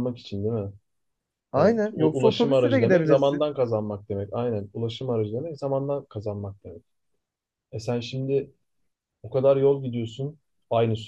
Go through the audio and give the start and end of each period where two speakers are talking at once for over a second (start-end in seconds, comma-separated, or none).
1.6-3.5